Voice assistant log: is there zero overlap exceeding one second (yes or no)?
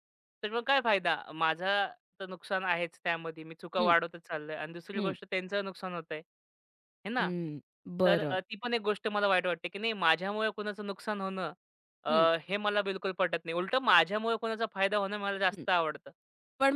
yes